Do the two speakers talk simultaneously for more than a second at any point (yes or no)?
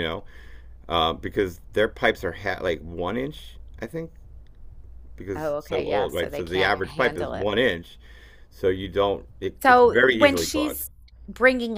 yes